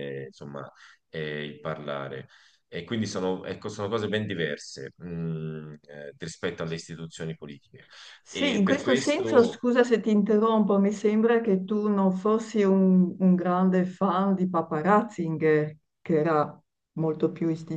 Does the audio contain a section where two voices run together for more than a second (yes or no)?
yes